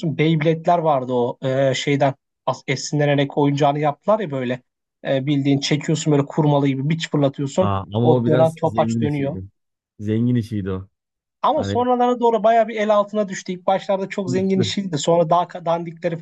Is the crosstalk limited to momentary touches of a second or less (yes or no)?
no